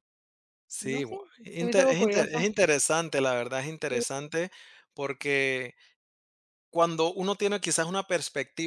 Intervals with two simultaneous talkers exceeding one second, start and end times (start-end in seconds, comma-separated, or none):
0.8-2.5